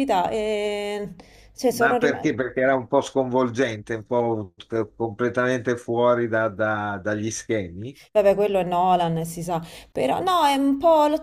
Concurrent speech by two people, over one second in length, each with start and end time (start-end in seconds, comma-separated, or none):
none